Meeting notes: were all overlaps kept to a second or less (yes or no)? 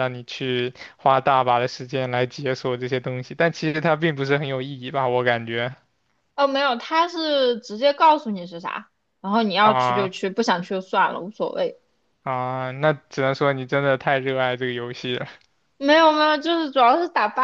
yes